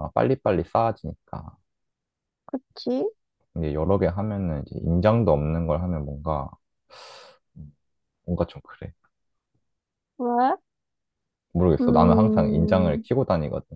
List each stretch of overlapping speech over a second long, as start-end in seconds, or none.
11.8-13.0